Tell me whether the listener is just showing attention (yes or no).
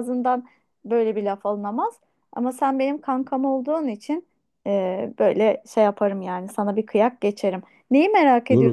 no